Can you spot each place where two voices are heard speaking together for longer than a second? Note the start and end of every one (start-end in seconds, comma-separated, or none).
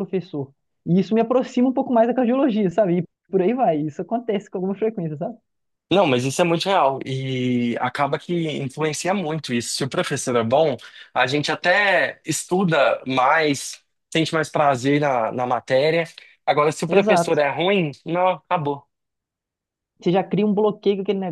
none